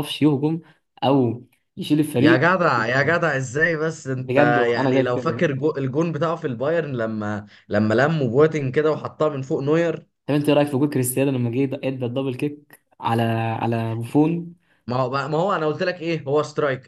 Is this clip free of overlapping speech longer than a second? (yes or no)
no